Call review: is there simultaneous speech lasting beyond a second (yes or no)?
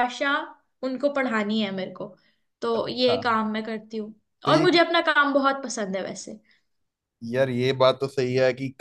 no